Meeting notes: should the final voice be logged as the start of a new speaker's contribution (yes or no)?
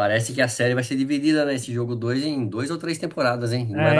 yes